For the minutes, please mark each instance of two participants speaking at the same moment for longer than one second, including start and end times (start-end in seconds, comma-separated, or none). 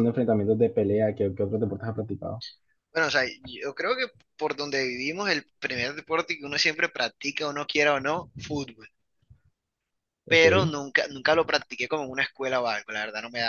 none